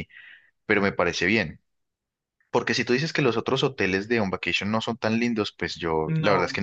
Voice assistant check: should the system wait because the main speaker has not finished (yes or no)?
yes